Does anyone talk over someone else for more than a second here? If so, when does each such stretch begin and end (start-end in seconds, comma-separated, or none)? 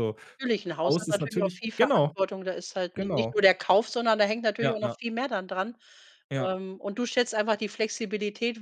0.8-2.1